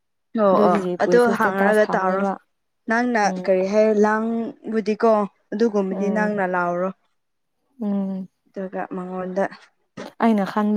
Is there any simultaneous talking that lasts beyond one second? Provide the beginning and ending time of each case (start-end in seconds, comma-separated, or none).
0.5-2.2